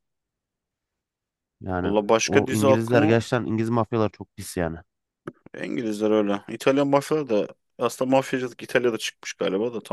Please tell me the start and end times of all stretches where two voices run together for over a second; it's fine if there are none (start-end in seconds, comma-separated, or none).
1.8-3.2